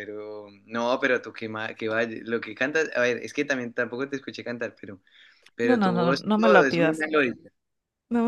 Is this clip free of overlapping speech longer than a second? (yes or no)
no